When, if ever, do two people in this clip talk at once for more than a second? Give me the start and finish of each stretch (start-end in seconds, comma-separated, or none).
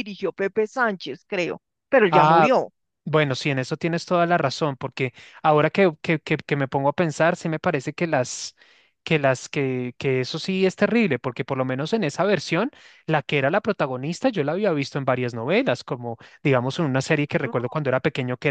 none